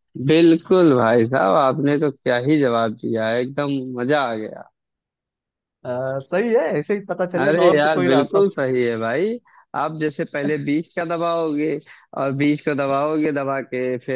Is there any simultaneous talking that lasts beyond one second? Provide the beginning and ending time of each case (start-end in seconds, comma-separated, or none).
7.4-8.6